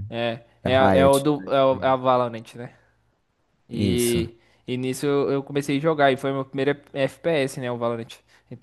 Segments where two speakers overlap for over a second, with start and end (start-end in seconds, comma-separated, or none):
0.6-2.0